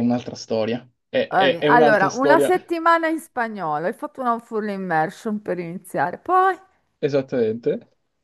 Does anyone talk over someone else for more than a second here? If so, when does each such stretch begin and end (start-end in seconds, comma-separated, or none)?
1.3-2.5